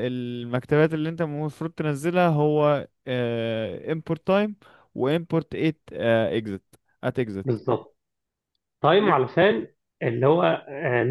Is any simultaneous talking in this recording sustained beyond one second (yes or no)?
no